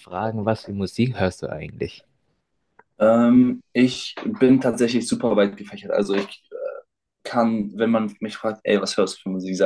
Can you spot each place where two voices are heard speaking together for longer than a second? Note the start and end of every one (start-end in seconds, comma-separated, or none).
none